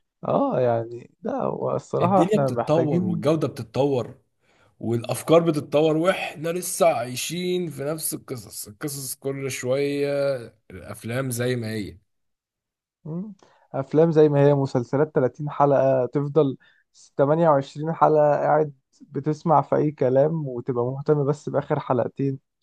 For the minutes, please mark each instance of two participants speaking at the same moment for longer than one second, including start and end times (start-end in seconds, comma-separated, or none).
2.0-3.2